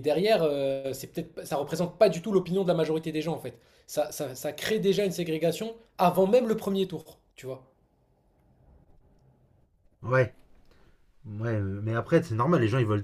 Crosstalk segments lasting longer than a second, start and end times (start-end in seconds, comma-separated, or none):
none